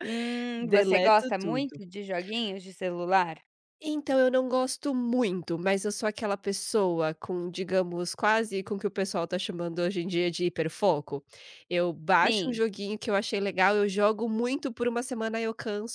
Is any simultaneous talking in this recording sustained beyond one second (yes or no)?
yes